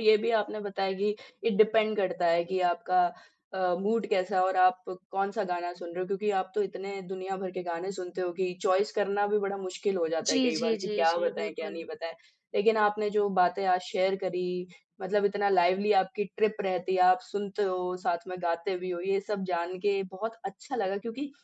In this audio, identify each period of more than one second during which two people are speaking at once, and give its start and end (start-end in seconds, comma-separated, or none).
10.3-11.8